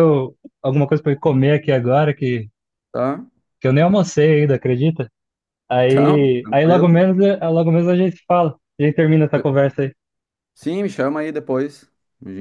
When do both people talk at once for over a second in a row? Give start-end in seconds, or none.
5.7-7.0